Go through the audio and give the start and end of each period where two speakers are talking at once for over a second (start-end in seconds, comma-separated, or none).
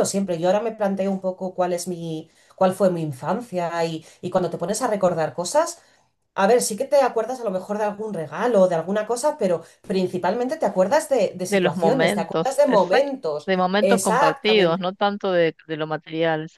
11.5-14.9